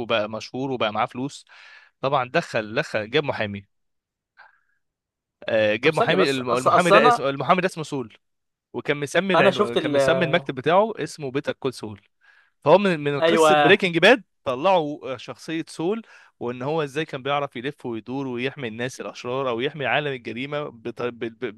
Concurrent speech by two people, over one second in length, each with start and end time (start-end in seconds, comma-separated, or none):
5.8-7.2